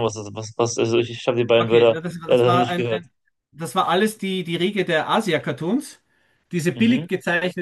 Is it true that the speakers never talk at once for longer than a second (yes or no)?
no